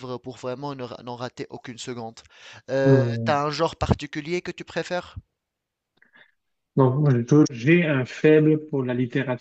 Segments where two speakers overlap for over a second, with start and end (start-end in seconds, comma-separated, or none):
none